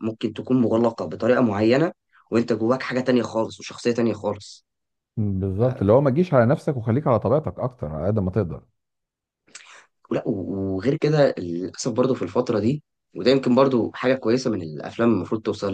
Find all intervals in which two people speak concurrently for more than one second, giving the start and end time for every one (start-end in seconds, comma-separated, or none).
none